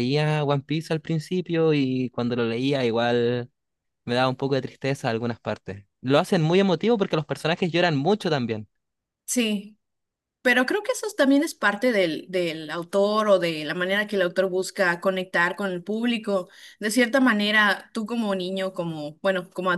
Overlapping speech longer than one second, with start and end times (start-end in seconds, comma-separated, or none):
none